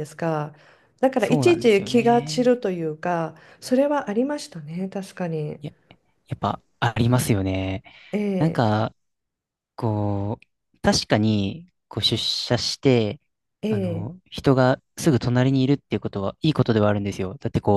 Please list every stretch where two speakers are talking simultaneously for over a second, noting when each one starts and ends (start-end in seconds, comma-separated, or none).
1.2-2.6